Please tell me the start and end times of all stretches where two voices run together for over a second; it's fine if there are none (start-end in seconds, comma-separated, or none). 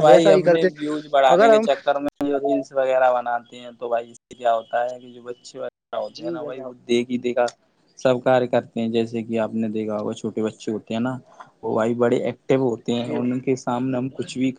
none